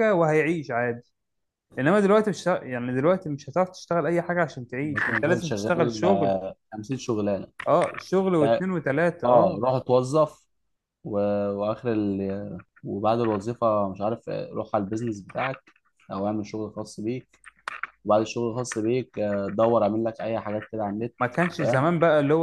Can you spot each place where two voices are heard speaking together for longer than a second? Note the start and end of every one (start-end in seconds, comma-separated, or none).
4.8-6.4